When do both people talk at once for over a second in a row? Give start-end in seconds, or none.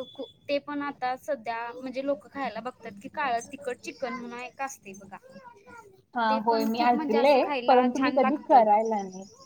6.3-8.7